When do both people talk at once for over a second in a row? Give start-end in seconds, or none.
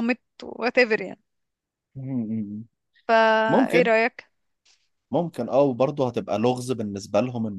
none